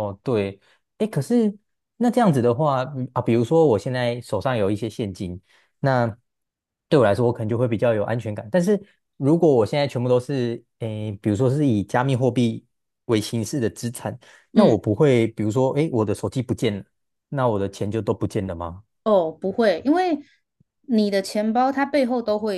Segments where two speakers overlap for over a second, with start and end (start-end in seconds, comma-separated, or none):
none